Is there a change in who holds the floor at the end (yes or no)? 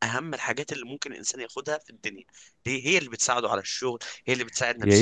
yes